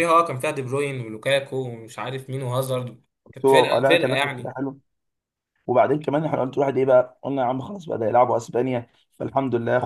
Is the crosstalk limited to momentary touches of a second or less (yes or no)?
no